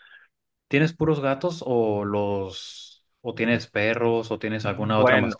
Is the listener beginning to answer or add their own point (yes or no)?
no